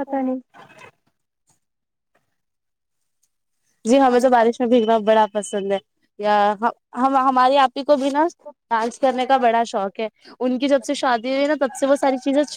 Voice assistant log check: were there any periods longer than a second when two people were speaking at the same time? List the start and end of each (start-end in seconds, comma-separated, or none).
3.9-5.2